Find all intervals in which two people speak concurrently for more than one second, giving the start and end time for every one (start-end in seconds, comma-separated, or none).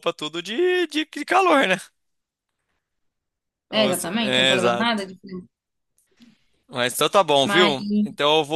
3.8-5.0